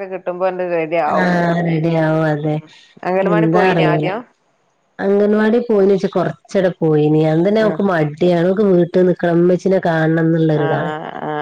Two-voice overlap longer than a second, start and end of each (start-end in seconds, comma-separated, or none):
none